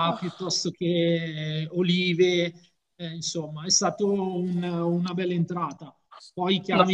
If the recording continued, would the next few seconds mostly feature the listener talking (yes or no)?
no